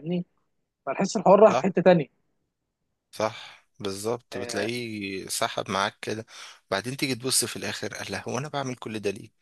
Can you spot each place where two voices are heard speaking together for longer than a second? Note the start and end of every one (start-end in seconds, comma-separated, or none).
none